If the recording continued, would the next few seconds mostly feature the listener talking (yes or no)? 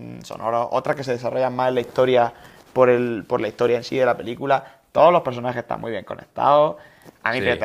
no